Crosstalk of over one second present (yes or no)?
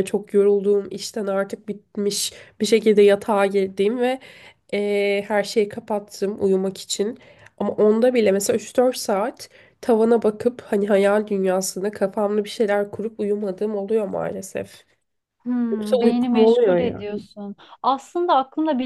yes